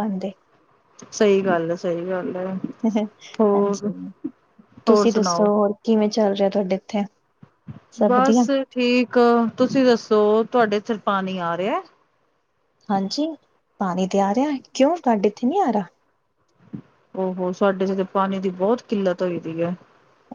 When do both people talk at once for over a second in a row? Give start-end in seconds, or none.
none